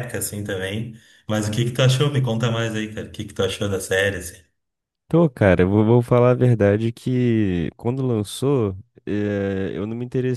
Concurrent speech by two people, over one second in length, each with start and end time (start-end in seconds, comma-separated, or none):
none